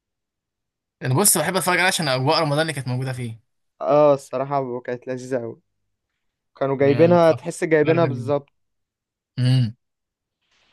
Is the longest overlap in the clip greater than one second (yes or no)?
yes